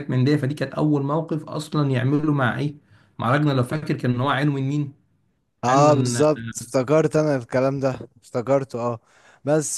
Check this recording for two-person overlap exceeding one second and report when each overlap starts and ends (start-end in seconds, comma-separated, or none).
none